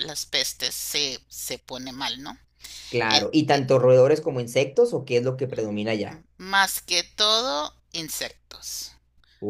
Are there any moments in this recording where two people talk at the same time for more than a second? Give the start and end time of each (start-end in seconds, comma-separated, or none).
none